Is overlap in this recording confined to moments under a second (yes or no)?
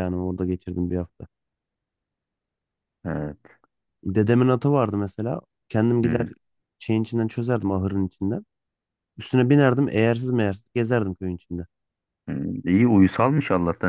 yes